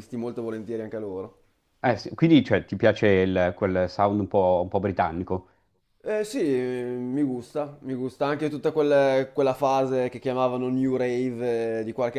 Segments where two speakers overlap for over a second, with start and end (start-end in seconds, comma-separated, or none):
none